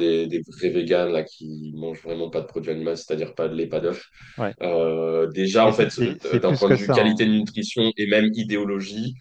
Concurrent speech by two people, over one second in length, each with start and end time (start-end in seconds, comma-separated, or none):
5.6-7.3